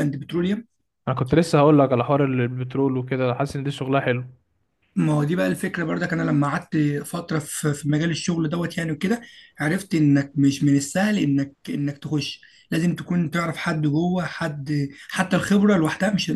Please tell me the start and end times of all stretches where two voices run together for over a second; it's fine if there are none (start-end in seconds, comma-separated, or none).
none